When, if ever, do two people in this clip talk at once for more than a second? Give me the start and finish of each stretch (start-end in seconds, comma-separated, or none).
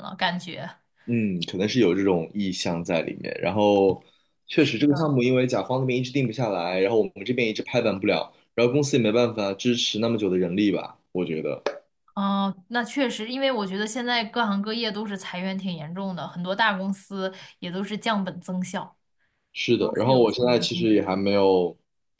19.8-21.1